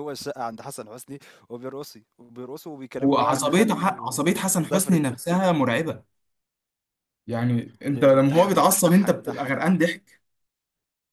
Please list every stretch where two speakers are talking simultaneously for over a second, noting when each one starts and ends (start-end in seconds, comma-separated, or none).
3.0-5.0, 7.9-9.7